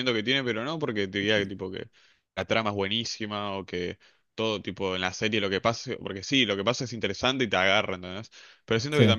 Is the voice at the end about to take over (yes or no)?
no